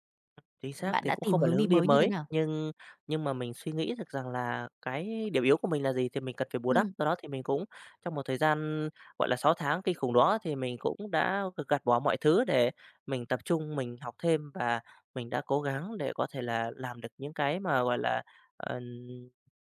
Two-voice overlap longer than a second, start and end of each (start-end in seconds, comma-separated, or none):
0.8-2.3